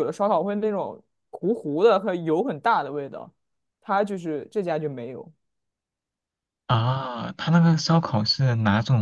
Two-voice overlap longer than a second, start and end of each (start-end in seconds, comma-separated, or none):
none